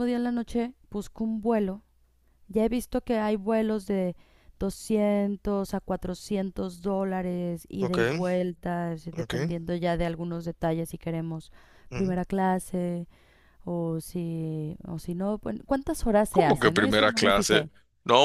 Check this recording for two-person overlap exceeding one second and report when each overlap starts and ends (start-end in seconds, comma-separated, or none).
16.3-17.7